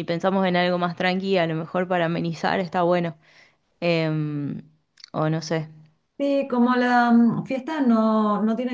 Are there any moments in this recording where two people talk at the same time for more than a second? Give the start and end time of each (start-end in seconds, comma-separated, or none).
none